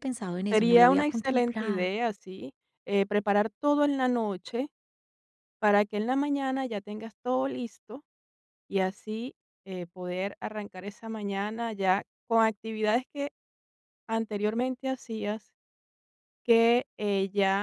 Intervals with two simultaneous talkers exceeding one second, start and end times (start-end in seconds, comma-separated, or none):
0.5-1.9